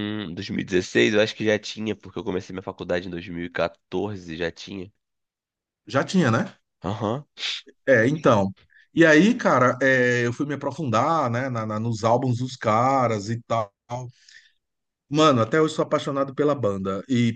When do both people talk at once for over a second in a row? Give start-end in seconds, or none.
none